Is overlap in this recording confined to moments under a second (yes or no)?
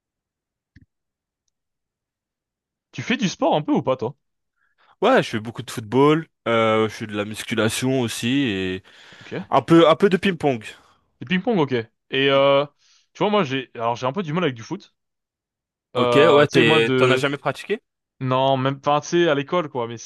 no